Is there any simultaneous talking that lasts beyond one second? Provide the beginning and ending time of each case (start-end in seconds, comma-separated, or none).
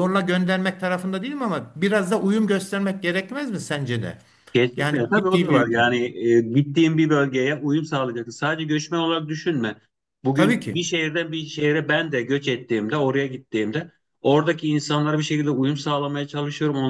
4.7-6.0